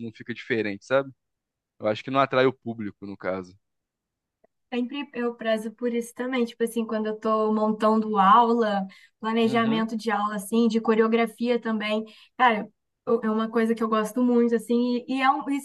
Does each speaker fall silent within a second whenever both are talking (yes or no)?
yes